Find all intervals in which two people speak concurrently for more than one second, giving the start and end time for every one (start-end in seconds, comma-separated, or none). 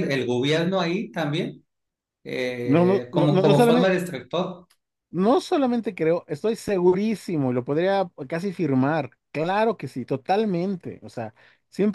2.6-4.0